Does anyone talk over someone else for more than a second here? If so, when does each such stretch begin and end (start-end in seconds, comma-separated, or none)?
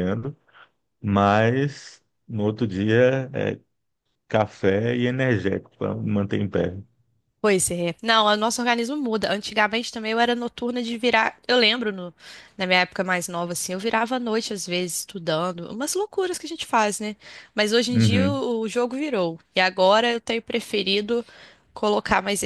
none